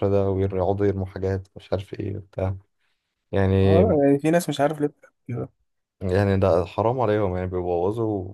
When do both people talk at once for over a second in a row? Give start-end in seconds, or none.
none